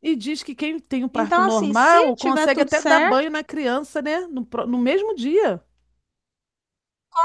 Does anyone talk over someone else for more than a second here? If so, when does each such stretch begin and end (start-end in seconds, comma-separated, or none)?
1.1-3.4